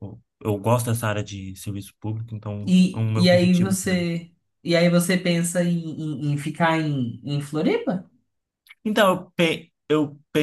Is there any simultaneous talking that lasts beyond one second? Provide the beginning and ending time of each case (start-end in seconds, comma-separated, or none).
2.6-4.1